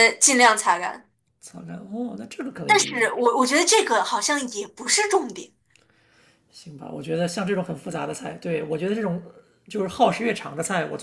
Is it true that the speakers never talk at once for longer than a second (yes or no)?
yes